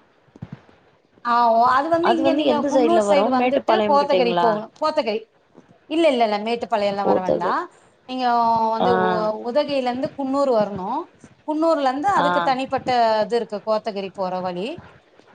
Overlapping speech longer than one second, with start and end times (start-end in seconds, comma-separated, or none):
2.5-4.5